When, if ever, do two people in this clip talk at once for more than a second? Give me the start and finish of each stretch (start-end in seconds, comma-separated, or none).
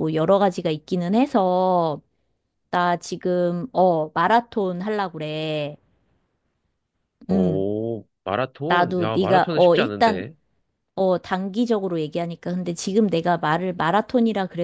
8.7-10.3